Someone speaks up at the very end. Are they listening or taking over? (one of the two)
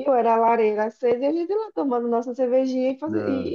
listening